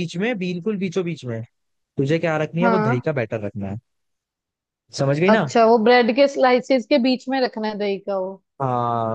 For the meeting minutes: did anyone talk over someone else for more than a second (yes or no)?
no